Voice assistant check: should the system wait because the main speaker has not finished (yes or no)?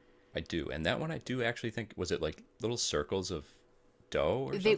no